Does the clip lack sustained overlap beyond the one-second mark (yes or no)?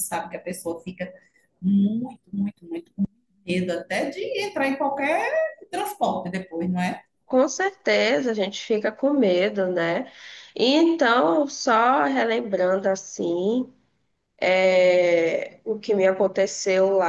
yes